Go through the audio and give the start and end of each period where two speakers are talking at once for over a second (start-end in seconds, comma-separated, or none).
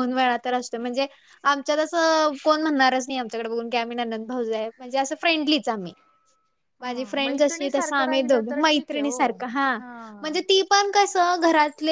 6.8-9.3